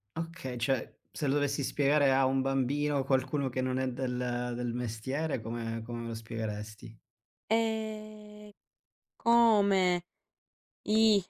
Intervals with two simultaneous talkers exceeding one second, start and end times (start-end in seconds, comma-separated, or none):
none